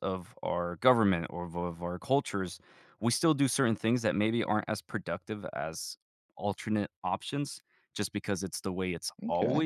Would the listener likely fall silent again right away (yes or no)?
yes